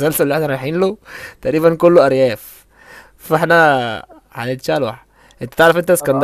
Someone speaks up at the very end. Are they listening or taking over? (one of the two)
listening